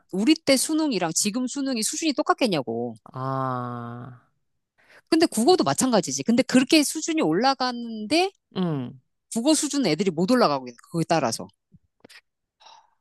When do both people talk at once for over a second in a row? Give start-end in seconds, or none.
none